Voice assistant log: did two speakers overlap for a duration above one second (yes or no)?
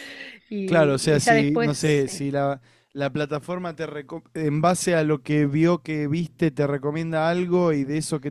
yes